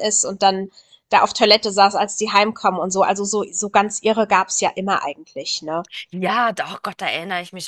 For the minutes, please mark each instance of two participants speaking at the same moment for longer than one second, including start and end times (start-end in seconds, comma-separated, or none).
none